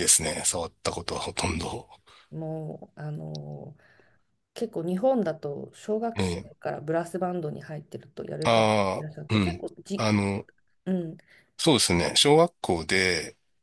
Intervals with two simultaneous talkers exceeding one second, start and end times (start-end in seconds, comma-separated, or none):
8.4-10.1